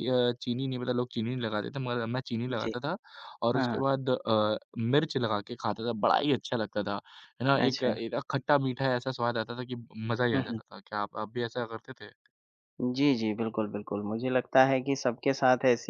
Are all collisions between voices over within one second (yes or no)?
yes